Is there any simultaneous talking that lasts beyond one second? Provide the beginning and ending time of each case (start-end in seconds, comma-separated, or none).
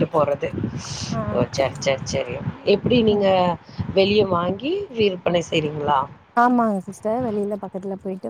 none